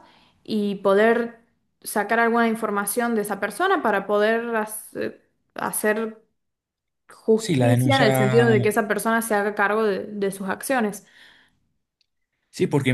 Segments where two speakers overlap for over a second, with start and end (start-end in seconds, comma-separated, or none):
7.3-8.6